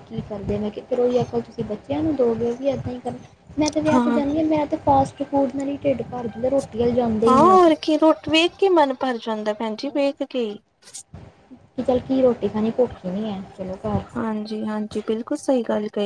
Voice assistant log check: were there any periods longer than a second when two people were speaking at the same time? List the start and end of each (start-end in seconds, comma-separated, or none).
none